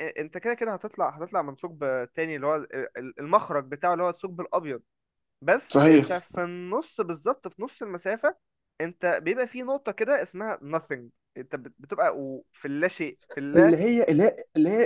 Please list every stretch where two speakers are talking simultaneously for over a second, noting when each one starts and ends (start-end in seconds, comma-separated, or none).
none